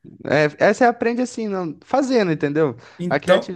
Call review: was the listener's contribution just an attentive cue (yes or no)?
yes